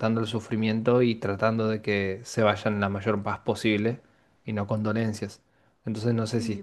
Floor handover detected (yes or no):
yes